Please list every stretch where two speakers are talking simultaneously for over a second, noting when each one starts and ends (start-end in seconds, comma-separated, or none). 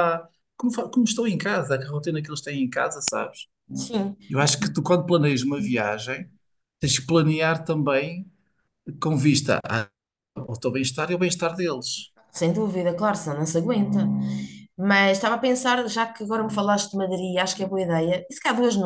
none